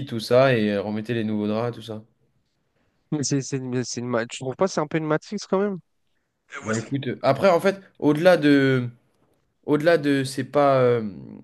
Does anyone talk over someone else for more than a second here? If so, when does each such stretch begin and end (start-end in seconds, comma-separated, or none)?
none